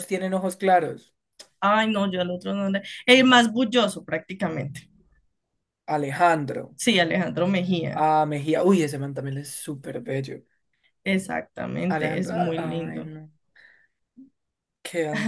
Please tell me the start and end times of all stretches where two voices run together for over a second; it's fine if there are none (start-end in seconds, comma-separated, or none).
11.9-13.1